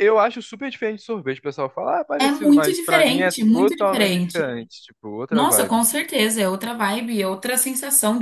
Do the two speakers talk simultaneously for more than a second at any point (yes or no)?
yes